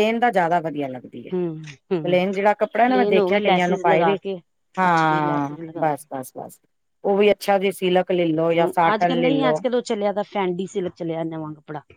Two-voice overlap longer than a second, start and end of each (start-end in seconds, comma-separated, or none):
2.9-4.2, 4.8-6.1